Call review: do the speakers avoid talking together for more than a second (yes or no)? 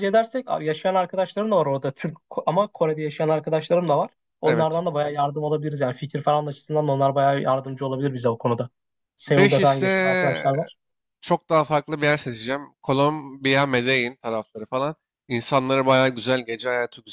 no